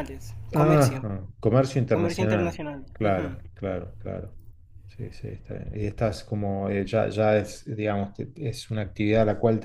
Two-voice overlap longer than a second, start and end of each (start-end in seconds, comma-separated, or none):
1.9-3.4